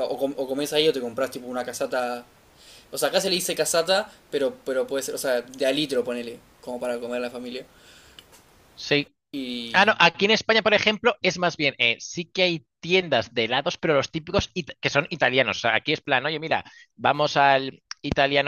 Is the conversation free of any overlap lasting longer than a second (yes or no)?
yes